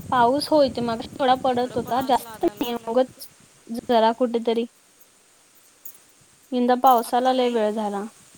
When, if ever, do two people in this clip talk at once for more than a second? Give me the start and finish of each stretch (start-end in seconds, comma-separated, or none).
1.5-2.9